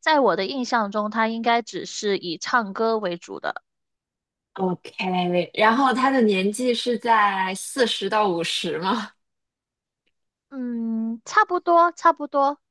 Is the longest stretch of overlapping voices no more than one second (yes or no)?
yes